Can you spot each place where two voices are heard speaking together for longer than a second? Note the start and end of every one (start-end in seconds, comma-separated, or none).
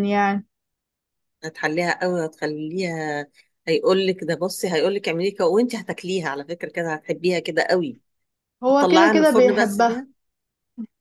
8.7-10.0